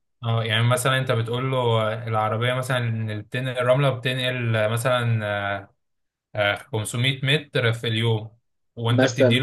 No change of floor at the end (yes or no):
yes